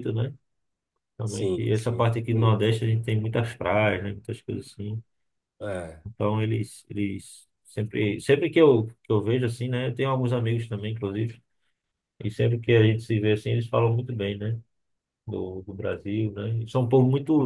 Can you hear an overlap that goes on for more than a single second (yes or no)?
yes